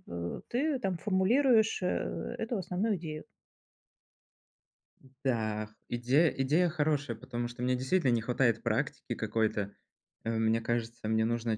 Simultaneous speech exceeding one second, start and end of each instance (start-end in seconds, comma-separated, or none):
none